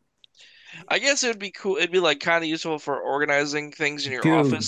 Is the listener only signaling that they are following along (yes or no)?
no